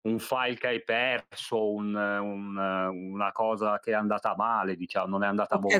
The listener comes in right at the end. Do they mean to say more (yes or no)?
yes